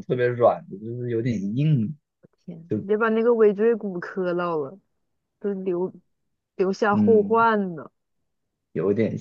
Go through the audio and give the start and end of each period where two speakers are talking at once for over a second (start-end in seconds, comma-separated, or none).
none